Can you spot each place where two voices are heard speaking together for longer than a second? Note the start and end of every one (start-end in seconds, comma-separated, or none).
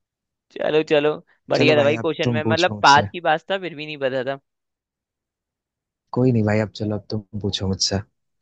1.5-3.1